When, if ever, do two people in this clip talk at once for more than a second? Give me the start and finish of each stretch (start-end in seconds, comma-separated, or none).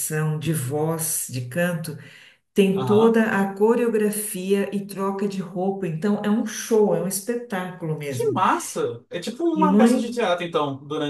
none